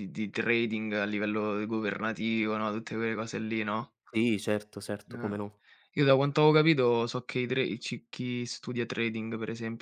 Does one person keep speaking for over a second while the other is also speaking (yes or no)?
no